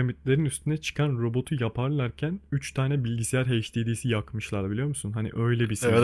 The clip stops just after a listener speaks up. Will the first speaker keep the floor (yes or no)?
no